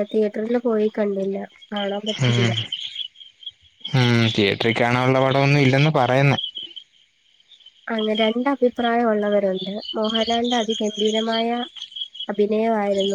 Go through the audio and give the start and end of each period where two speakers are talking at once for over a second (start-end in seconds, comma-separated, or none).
none